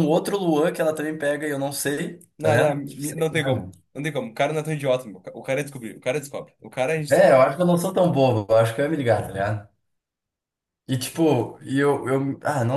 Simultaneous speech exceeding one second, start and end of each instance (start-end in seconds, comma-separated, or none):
2.4-3.7